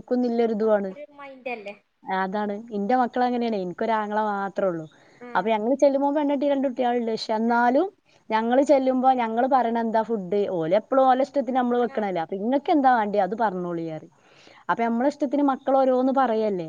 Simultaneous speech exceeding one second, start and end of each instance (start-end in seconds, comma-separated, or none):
none